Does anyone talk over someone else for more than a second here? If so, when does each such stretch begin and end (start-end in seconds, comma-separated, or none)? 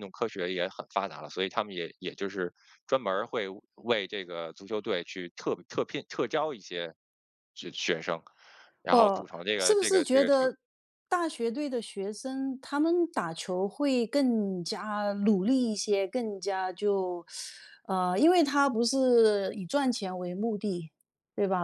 8.9-10.4